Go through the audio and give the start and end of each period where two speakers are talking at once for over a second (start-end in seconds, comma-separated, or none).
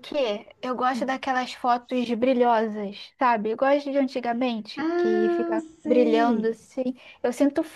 4.8-6.6